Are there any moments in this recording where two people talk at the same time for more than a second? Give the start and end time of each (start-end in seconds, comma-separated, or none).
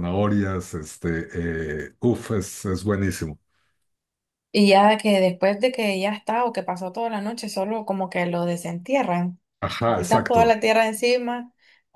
none